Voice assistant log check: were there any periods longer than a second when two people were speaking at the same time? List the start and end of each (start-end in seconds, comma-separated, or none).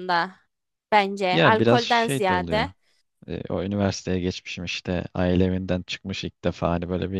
1.3-2.7